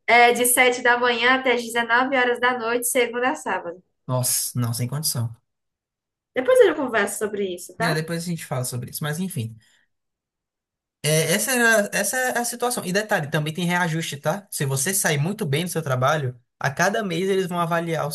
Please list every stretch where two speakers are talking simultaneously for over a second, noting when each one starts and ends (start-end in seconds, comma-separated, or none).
none